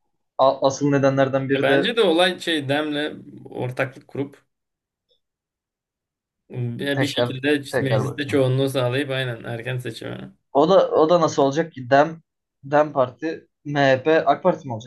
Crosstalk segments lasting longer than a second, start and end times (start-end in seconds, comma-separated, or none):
6.9-8.5